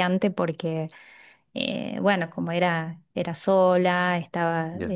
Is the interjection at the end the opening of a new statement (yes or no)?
no